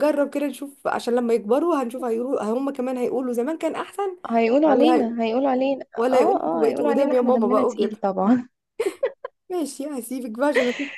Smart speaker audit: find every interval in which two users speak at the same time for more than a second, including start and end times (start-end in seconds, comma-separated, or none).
6.0-8.0